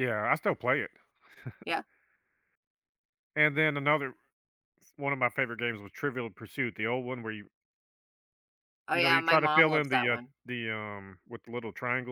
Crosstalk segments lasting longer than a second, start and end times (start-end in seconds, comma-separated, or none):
8.9-10.3